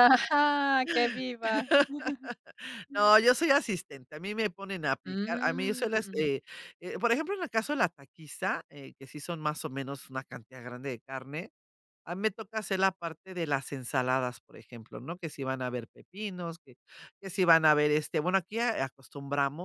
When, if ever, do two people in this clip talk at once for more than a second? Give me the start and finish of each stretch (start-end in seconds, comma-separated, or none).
5.1-6.3